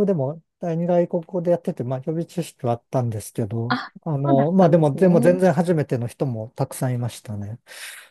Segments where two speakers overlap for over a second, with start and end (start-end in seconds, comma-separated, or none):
3.7-5.4